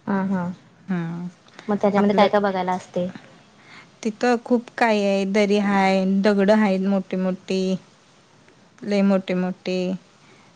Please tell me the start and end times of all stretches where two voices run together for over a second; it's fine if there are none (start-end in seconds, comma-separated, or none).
none